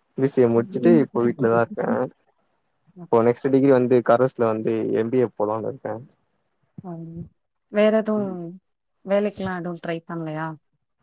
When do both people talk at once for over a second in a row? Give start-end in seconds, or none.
0.6-1.8